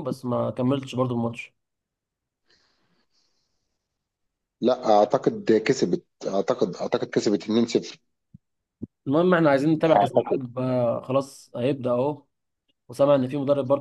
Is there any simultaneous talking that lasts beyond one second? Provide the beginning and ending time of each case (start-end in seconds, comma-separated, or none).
none